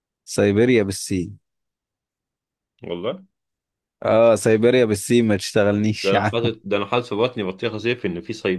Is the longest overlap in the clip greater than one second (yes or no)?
no